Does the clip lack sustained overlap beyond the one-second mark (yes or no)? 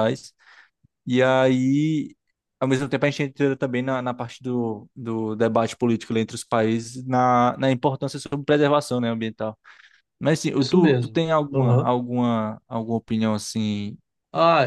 no